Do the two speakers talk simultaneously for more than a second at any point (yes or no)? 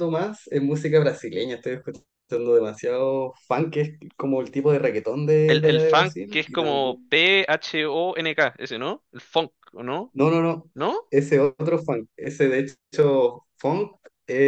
yes